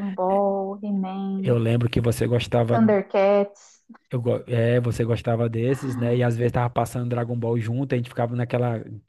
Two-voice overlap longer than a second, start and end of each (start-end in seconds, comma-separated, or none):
none